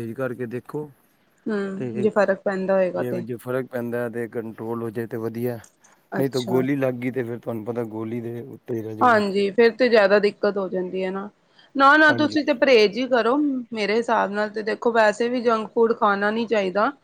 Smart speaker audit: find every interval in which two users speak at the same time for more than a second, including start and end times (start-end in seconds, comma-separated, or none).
none